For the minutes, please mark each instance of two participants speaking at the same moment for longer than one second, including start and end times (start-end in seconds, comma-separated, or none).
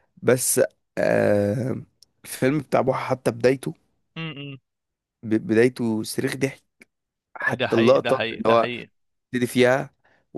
7.5-8.7